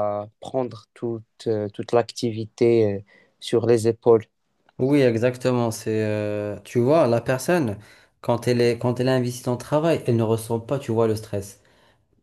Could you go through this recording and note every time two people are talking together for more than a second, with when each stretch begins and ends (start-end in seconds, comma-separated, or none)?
none